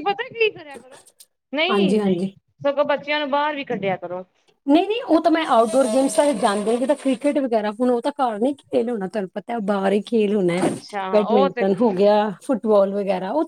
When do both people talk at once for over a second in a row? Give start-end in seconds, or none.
none